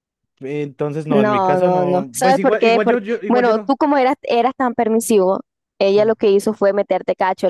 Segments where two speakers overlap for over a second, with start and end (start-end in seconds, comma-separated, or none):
1.1-3.8